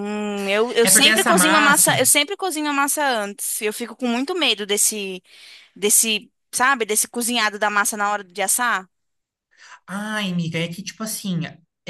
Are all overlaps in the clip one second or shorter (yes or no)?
no